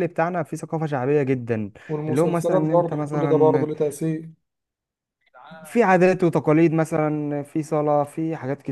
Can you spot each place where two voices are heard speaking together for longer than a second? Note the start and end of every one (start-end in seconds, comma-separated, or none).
2.1-3.7